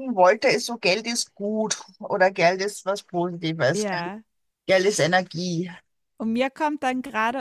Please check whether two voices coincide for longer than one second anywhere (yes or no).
no